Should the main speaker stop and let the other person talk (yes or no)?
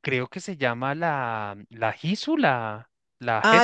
yes